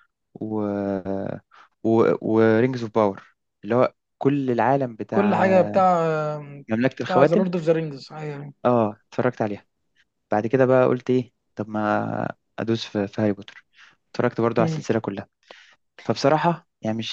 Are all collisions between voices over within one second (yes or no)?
yes